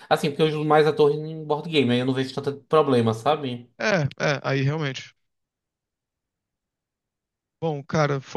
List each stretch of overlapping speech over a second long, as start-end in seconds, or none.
none